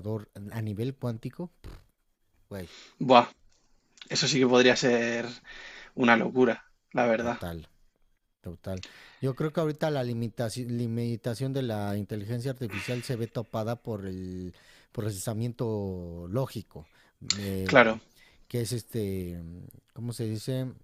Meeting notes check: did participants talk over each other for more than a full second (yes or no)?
no